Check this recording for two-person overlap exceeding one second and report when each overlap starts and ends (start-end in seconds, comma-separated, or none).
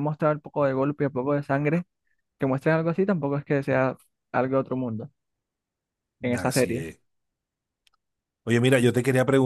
none